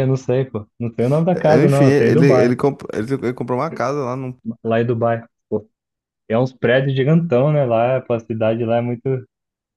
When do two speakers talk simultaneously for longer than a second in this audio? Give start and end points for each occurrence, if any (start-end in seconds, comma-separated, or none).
1.3-2.5